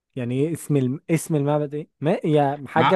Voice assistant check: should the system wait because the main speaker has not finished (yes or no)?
no